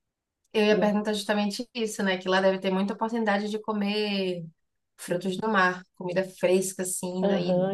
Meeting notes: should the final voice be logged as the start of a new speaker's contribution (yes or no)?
yes